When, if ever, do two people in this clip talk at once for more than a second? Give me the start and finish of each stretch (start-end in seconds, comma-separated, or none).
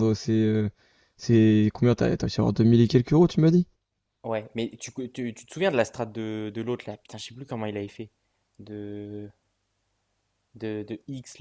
none